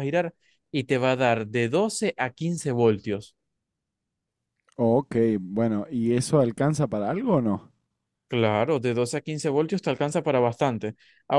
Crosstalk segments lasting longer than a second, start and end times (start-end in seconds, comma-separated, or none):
none